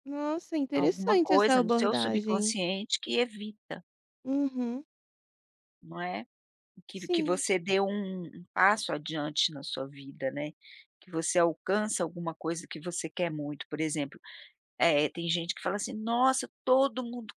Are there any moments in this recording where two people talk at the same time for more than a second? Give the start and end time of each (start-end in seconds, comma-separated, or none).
0.7-2.5